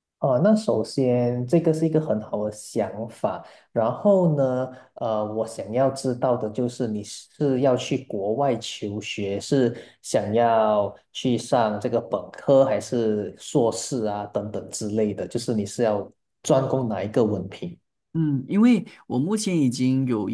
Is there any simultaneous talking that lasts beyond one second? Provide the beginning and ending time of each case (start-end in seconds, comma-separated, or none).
none